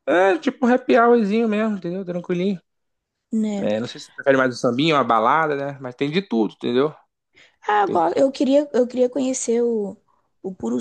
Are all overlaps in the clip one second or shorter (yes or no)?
yes